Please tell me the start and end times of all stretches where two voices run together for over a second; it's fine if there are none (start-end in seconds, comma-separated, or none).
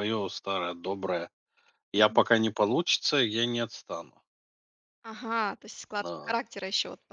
none